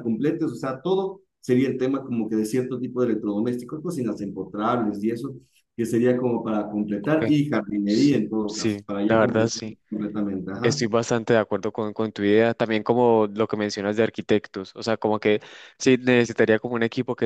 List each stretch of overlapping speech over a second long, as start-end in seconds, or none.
7.8-9.8